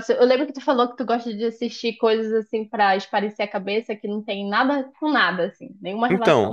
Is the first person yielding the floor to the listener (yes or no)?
yes